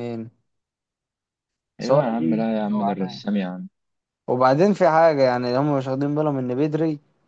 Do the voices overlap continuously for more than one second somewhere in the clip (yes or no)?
yes